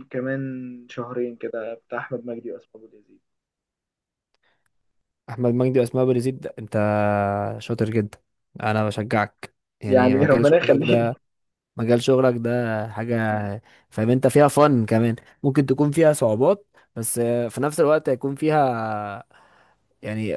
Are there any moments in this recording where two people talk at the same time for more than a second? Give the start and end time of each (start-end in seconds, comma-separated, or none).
9.9-11.1